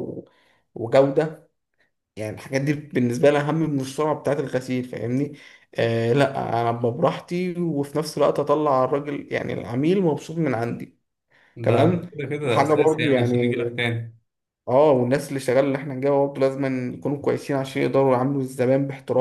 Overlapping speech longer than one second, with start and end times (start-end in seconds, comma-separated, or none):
11.6-13.5